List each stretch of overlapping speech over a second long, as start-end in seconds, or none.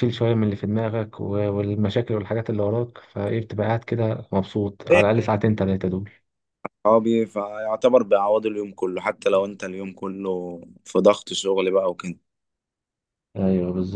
none